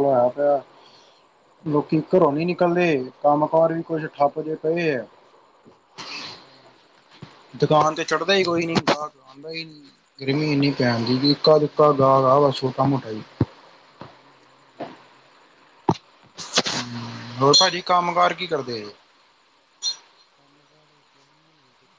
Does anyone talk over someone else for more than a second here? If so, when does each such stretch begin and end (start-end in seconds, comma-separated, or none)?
10.8-12.4